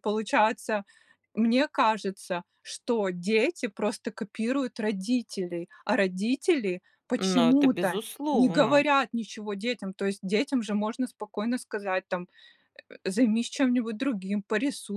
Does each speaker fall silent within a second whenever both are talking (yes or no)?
no